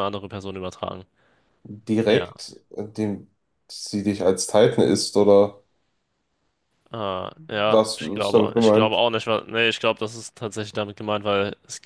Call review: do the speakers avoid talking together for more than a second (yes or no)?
no